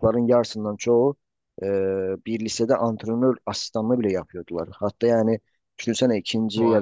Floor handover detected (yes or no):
no